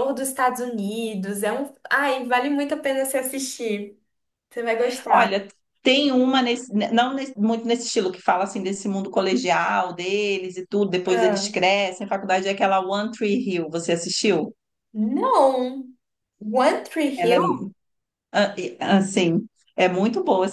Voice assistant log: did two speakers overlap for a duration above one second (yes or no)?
no